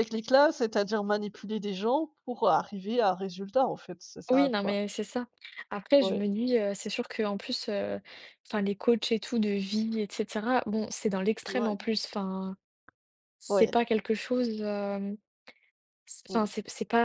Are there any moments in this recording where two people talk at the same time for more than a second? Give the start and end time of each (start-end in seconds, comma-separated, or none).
none